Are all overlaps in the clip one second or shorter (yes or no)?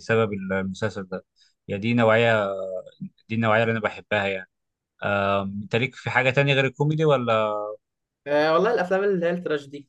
yes